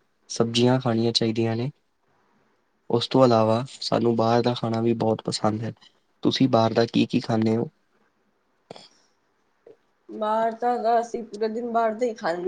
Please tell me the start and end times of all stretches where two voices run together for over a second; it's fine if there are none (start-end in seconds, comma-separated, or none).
none